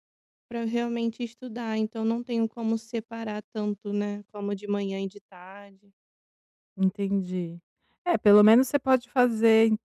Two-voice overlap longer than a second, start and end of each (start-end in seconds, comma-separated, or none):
none